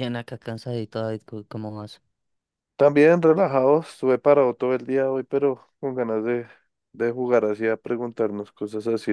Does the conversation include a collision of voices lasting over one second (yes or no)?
no